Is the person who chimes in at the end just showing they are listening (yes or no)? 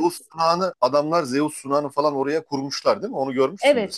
no